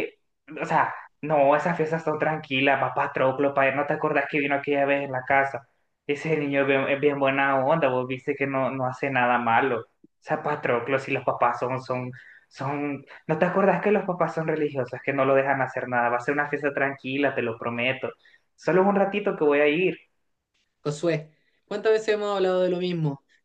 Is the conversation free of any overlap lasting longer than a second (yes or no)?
yes